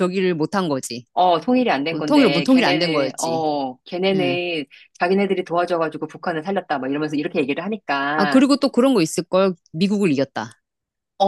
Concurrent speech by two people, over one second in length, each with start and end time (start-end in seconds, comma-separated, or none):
1.9-3.4